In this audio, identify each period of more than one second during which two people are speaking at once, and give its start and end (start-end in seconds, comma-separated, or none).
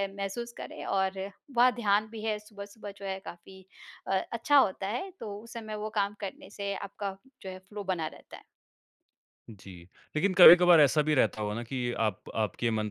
none